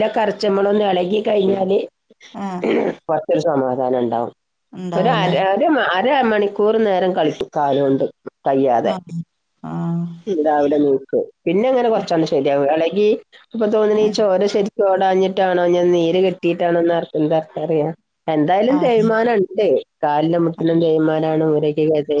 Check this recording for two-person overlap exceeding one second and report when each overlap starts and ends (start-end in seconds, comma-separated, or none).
none